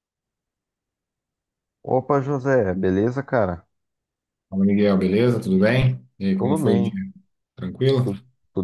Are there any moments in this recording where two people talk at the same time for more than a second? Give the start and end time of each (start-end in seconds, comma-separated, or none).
none